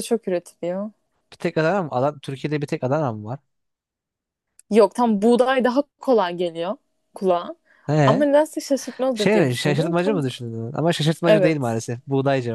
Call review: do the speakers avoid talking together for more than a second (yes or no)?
no